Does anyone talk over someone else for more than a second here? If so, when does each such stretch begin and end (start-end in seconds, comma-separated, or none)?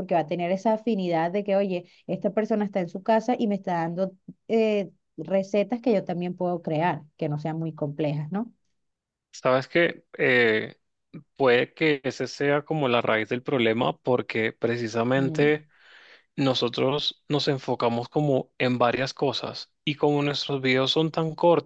none